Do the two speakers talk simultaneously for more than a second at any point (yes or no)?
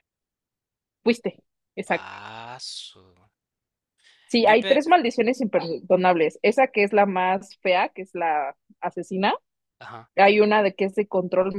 no